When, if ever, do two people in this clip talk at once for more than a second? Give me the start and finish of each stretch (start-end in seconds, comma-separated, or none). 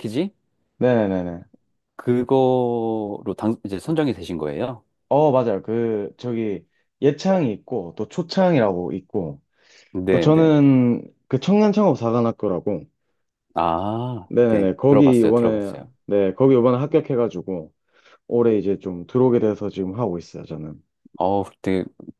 14.3-15.9